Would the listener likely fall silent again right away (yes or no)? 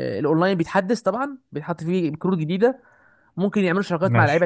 yes